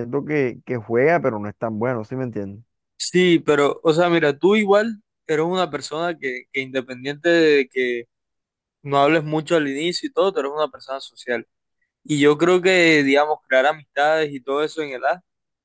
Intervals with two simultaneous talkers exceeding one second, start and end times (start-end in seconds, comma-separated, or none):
none